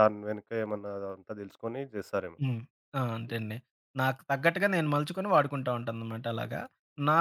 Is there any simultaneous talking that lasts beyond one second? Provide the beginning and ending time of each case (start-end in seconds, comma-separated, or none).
none